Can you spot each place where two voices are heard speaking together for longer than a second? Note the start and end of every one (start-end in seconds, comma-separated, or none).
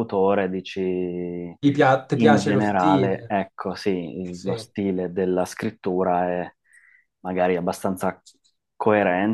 2.1-3.4